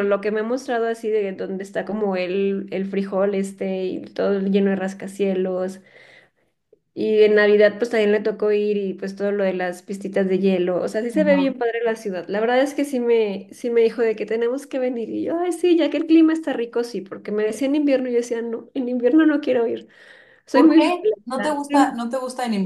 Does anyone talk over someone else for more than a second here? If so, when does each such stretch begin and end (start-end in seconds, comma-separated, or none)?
20.5-22.0